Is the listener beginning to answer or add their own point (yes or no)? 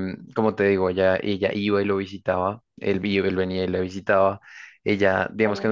no